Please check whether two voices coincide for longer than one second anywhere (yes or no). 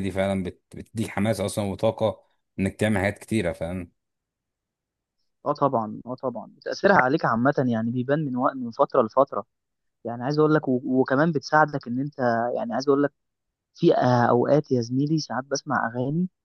no